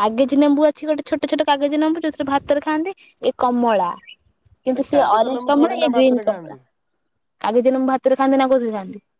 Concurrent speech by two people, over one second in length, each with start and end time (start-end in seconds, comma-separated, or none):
4.7-6.6